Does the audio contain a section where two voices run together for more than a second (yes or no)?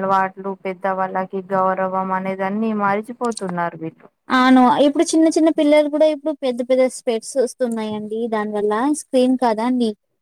no